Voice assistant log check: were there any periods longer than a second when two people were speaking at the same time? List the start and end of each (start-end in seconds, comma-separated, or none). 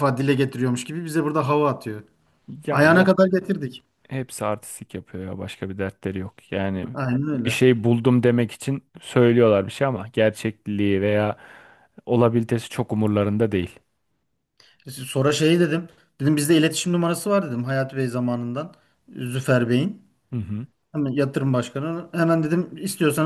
none